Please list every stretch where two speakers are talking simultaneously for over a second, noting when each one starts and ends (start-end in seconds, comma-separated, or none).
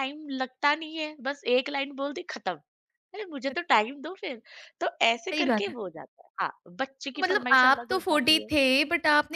7.1-8.5